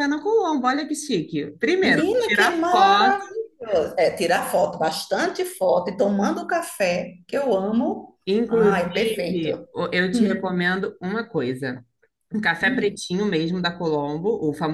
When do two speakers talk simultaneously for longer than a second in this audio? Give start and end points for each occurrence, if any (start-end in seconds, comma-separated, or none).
1.8-3.2, 8.2-9.5